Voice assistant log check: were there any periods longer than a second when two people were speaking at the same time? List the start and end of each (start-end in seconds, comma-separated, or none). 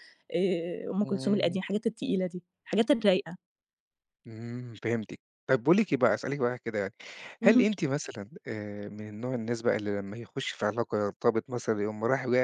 none